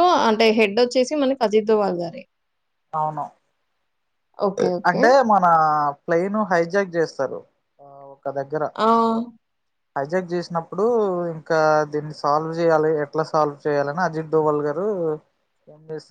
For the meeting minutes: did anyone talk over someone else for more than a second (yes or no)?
no